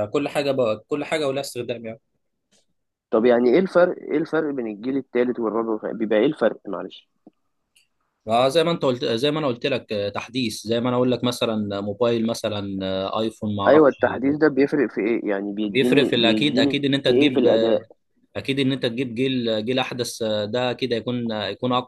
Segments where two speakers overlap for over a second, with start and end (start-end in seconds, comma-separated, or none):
15.7-17.8